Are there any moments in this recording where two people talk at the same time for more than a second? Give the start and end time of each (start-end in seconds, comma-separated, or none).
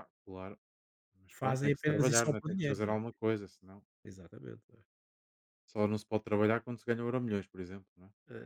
1.3-3.0